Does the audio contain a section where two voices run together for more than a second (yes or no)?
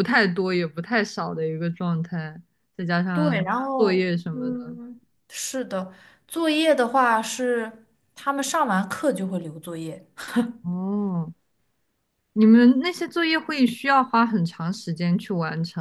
yes